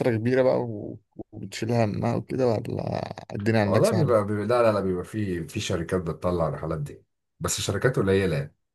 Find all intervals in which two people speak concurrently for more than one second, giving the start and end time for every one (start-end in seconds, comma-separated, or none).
none